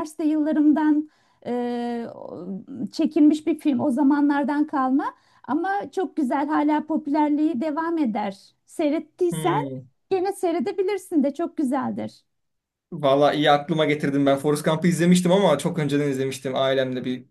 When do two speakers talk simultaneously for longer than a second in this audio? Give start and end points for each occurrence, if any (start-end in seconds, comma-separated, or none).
none